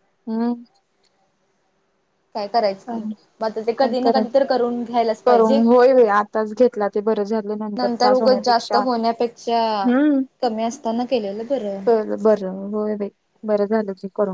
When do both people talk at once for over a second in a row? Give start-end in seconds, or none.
8.1-9.9